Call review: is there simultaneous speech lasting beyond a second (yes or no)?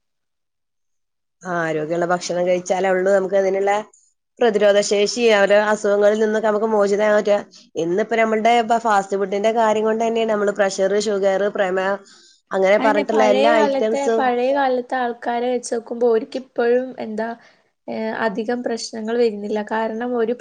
no